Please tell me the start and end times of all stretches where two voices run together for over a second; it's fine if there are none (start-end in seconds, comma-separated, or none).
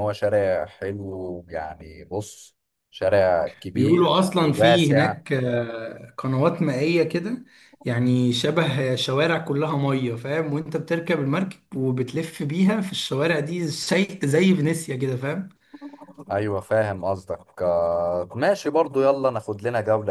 3.8-5.2